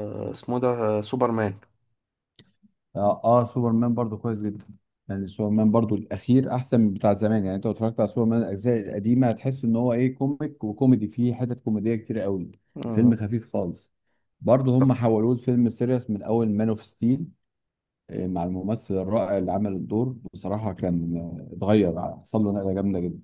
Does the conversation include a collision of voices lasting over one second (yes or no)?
no